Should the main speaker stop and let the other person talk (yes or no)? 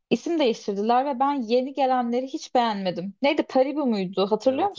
yes